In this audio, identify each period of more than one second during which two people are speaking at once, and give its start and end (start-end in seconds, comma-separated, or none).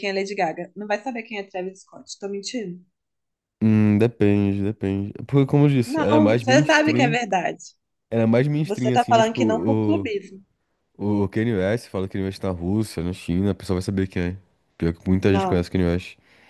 5.8-7.2, 8.6-10.1